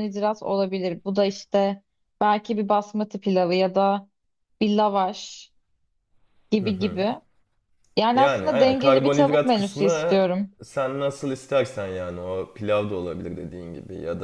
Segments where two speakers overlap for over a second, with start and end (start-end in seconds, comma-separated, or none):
8.1-10.2